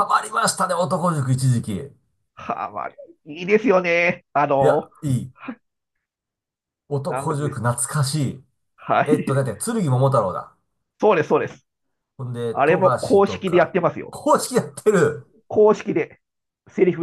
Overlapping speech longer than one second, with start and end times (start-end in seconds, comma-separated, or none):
12.5-14.2